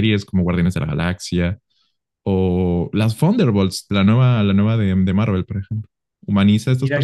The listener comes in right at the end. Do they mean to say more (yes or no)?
yes